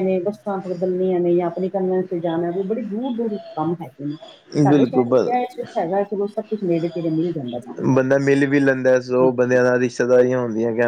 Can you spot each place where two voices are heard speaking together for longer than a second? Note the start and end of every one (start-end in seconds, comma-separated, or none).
none